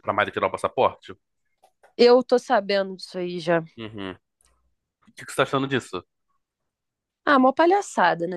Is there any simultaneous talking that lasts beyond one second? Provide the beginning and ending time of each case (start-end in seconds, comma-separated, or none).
none